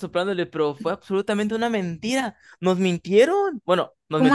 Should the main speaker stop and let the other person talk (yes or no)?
no